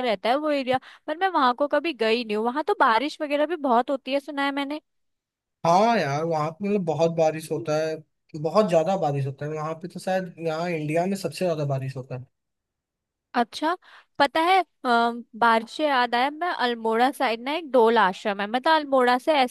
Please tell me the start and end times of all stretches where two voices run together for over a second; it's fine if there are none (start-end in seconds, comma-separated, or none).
none